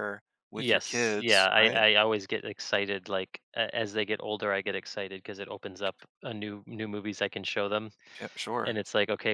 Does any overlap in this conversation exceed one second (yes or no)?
yes